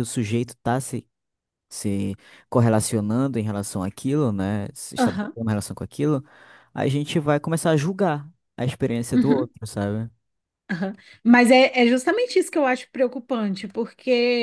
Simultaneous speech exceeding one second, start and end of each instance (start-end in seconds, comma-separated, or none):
none